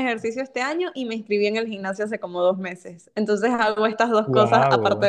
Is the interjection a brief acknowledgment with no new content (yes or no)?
yes